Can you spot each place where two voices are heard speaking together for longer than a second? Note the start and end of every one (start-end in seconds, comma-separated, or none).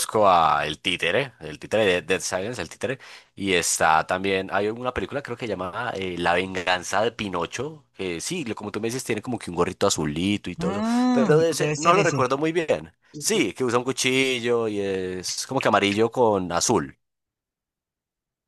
10.6-12.2